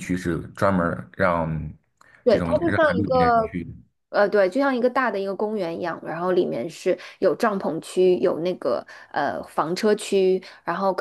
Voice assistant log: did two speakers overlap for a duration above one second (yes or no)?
yes